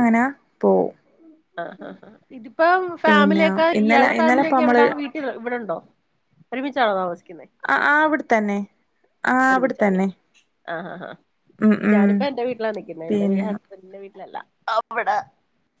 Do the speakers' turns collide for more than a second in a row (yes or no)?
yes